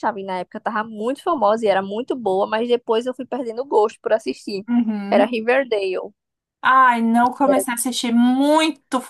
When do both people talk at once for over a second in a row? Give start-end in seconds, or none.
none